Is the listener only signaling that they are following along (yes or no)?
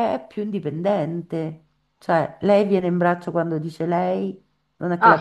yes